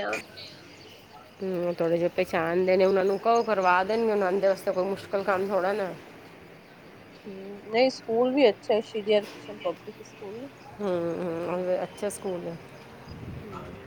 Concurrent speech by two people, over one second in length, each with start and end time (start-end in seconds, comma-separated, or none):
none